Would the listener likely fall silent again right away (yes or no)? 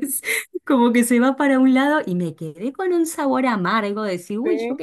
yes